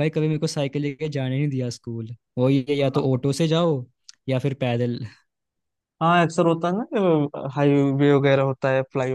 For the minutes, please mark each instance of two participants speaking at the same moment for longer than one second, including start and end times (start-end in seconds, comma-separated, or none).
none